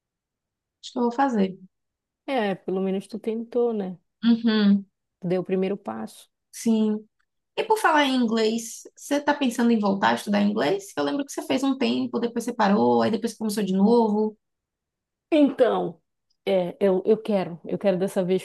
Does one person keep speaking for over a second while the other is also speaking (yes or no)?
no